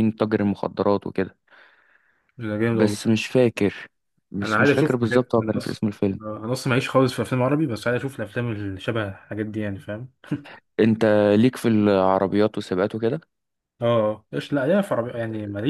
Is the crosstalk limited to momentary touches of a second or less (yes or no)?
no